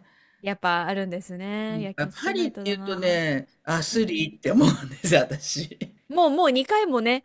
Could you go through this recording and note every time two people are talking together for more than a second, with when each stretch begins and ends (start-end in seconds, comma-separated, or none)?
2.0-3.2